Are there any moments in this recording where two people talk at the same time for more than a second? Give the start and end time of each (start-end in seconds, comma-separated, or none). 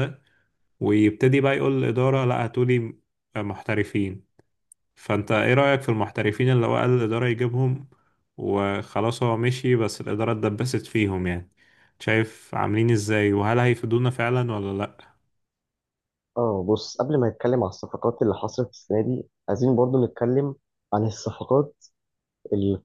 none